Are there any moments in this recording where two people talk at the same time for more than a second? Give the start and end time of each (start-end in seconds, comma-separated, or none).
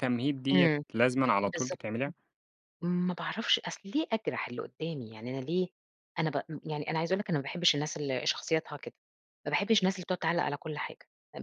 none